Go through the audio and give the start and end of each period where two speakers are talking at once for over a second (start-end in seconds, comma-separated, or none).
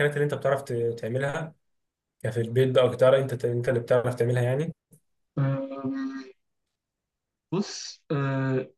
none